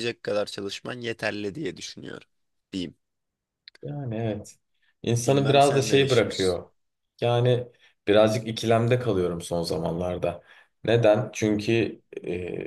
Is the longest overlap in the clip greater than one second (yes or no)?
yes